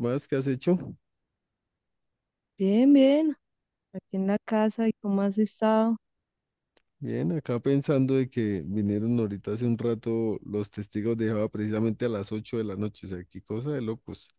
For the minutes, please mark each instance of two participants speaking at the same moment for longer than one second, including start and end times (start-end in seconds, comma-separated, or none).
none